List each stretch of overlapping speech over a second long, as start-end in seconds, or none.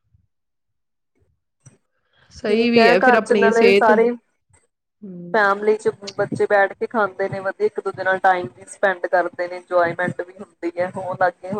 2.5-3.9